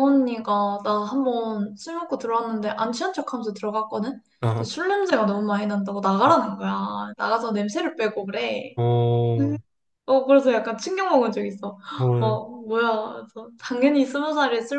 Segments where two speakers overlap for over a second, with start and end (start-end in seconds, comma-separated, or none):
none